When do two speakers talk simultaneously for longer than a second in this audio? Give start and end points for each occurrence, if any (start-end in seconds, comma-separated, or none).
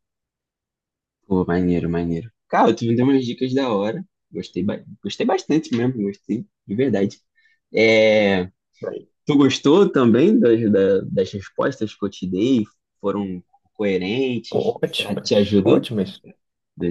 14.5-15.9